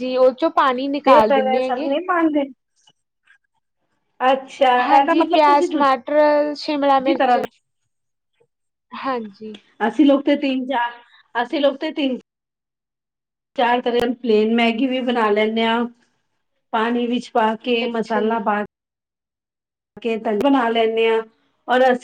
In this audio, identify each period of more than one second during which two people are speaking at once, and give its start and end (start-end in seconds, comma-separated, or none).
4.9-7.4